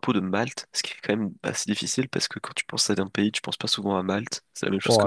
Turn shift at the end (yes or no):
yes